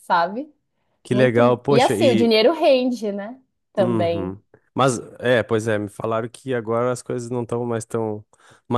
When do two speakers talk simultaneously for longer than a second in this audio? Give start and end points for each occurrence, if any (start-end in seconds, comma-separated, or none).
1.1-2.4